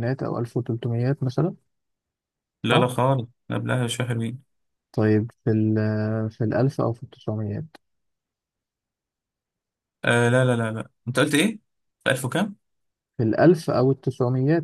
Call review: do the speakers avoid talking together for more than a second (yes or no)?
yes